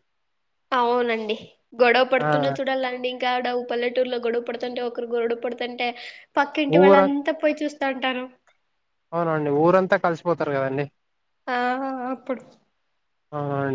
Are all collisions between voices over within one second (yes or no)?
yes